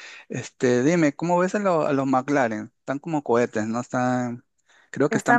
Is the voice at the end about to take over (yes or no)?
yes